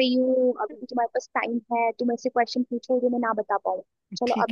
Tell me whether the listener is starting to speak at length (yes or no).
yes